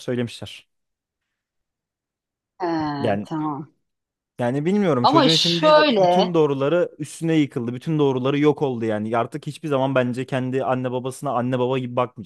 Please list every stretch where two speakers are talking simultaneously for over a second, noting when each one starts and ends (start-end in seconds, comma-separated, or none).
5.0-6.3